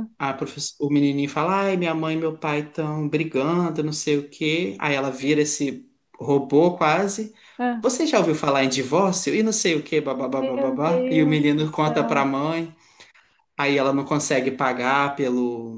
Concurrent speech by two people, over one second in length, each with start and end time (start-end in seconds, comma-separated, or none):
10.3-12.3